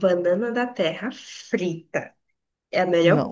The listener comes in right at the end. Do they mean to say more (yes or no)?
no